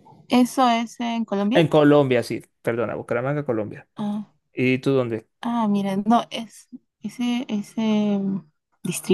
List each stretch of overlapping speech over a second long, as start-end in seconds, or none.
none